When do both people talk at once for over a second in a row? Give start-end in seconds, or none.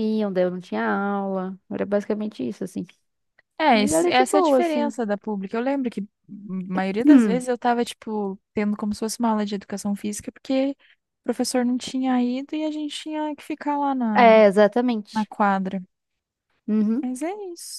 3.7-4.9